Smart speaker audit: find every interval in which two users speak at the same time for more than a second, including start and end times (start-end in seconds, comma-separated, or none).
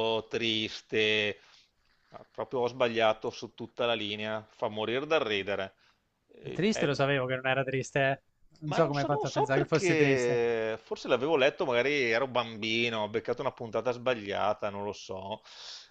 8.6-10.4